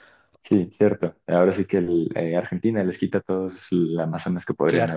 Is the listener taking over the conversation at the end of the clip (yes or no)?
yes